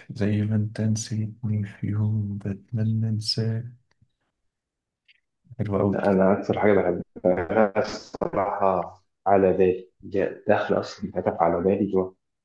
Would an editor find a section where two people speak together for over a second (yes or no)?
no